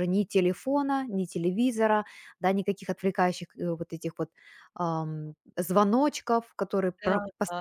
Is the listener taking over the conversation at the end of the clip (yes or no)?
no